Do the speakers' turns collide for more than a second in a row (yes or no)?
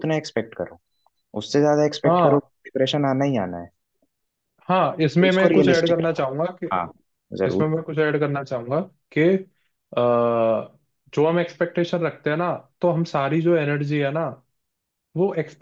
yes